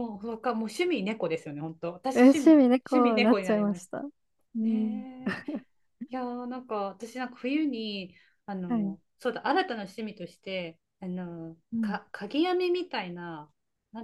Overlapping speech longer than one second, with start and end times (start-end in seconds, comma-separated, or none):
2.1-4.0